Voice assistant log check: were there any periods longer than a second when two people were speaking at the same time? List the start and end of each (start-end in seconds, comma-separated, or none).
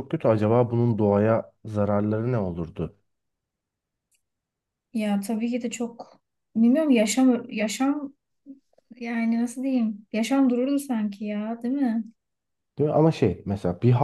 none